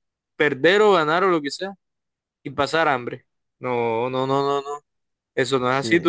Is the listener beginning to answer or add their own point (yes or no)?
no